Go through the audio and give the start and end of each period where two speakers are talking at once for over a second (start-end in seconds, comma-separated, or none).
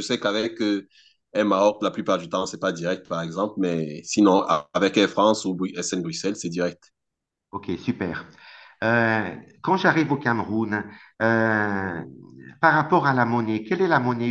none